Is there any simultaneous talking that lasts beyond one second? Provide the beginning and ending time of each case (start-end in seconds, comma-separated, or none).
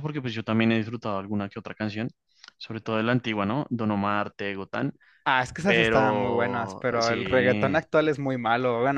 5.7-7.8